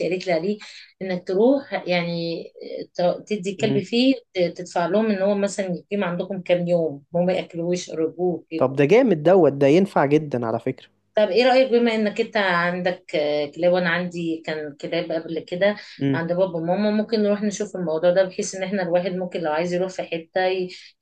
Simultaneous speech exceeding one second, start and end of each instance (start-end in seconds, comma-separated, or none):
none